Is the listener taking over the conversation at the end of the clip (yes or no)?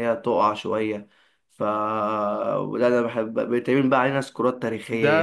yes